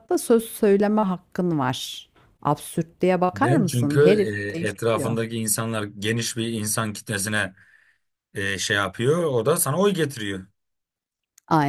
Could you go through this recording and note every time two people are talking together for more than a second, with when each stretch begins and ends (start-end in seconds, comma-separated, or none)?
3.3-5.2